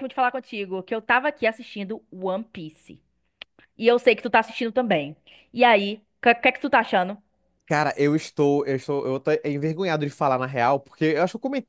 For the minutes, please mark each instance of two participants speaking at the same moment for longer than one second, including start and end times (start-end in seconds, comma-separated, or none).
none